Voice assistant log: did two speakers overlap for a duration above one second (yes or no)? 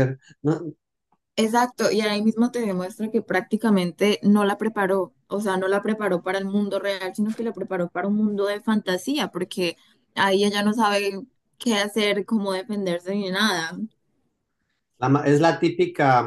no